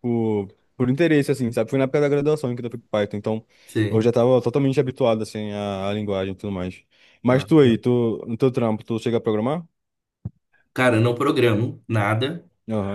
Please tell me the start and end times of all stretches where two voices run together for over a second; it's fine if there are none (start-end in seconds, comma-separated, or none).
none